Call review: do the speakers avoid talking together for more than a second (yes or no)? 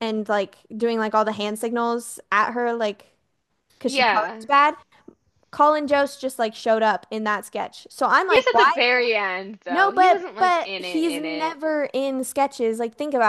no